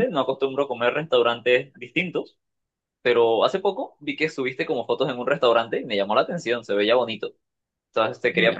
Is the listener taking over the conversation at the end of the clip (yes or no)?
no